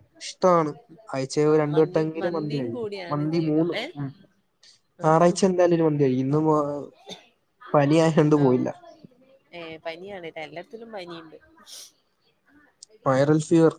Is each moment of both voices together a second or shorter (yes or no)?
no